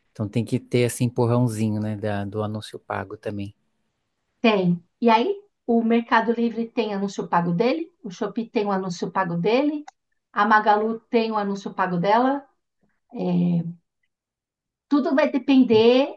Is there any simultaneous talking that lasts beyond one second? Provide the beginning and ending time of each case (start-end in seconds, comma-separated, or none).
none